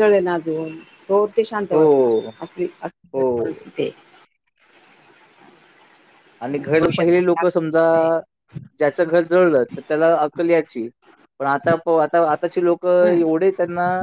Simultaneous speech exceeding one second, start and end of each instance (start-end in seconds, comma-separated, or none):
6.4-7.8